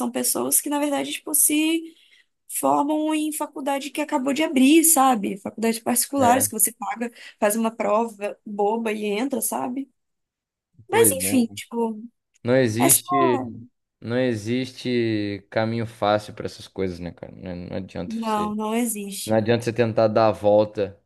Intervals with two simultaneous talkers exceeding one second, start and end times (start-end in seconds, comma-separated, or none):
none